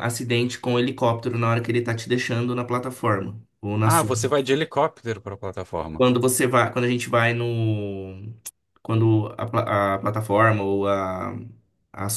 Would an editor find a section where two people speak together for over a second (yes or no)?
no